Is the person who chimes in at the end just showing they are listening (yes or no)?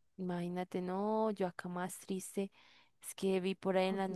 yes